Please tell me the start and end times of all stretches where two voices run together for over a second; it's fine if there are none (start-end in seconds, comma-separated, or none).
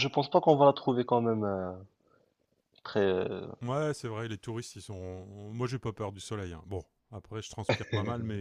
none